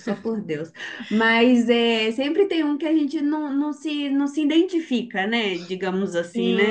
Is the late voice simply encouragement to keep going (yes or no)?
no